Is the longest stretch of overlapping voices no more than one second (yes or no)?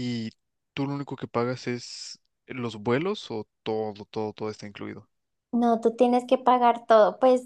yes